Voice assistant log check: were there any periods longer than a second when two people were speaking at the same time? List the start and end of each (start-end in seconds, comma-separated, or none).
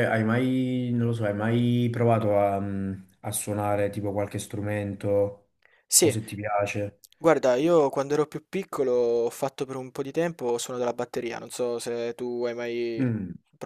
none